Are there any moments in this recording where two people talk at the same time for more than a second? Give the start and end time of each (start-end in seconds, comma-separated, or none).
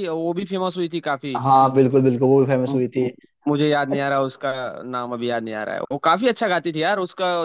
none